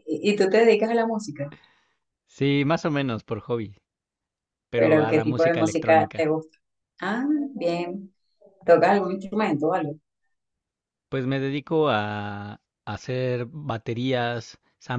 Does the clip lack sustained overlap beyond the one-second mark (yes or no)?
no